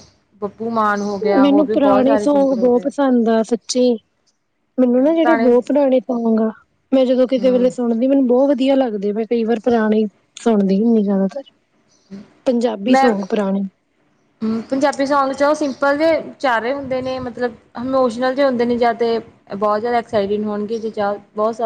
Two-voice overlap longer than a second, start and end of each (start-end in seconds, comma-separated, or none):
1.4-2.9